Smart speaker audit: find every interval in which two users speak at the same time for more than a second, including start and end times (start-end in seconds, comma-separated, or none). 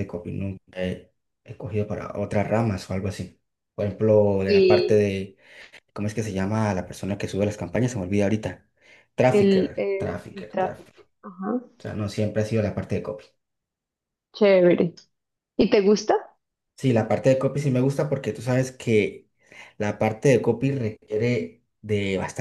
9.3-11.0